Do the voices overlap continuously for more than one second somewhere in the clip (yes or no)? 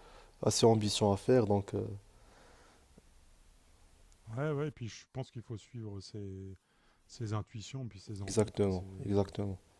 no